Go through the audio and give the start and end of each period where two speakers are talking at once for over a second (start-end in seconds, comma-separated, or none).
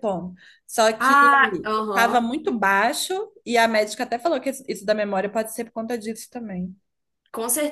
none